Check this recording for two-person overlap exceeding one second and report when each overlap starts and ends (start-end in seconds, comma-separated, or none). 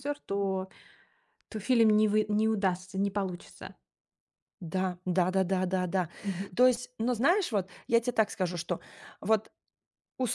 none